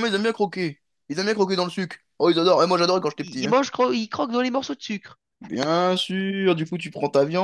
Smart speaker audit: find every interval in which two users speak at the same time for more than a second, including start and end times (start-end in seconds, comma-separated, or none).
none